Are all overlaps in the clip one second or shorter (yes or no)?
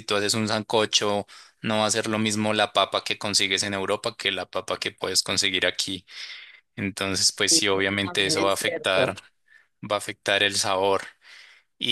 no